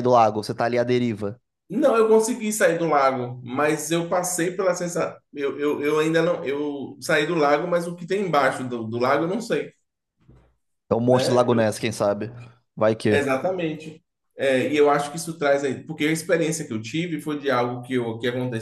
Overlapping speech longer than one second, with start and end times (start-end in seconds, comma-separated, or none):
none